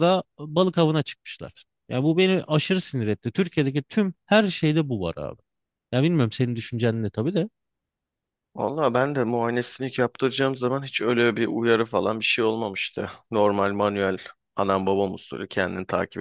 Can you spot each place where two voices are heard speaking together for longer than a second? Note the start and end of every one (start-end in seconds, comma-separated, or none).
none